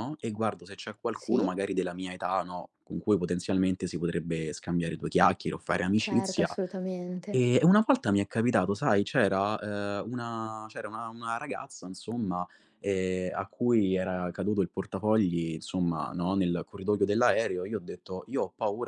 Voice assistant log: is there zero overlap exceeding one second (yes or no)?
yes